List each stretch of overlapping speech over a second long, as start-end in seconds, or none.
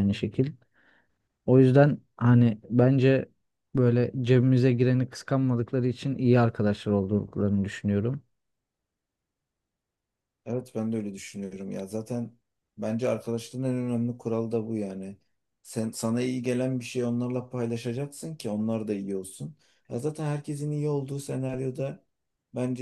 none